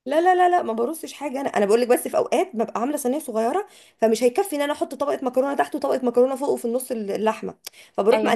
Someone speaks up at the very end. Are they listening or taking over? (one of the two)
listening